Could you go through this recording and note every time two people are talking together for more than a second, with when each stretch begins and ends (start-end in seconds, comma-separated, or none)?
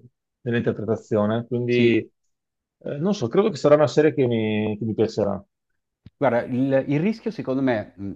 none